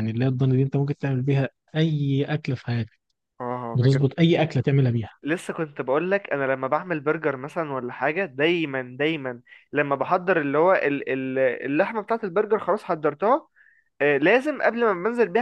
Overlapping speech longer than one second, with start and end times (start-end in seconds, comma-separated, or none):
none